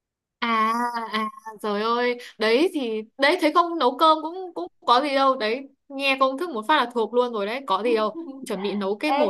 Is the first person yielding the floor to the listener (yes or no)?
yes